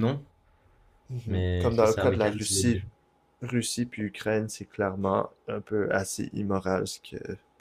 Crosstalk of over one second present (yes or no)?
yes